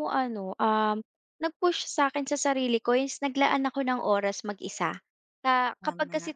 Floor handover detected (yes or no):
no